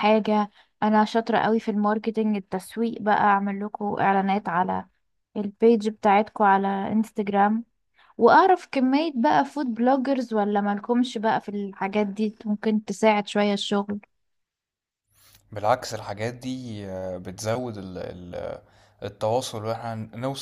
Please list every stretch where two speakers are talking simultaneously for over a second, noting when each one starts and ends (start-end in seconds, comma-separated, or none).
none